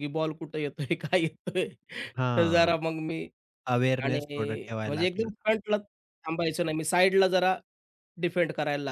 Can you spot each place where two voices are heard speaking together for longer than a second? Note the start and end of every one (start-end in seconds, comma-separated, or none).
none